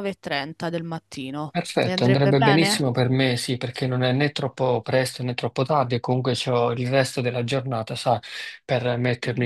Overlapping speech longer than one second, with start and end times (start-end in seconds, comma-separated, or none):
1.6-2.9